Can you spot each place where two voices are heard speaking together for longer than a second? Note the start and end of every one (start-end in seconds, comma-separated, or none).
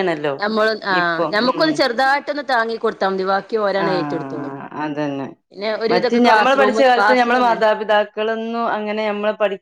5.9-7.6